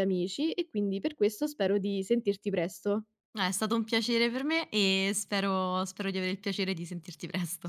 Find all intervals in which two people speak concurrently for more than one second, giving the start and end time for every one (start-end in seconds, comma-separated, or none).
none